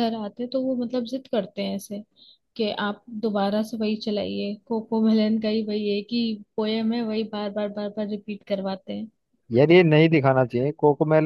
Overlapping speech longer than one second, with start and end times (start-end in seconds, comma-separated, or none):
none